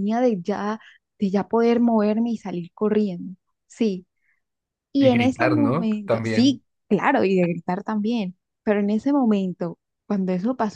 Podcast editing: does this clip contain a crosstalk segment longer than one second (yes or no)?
yes